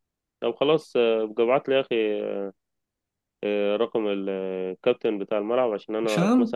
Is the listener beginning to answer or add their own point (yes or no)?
no